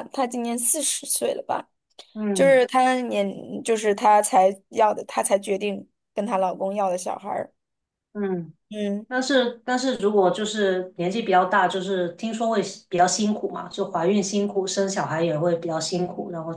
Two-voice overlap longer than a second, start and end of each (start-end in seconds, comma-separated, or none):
none